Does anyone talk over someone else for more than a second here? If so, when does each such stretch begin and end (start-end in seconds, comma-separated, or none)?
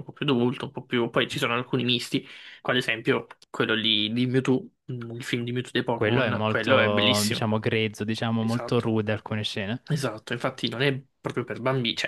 5.9-7.5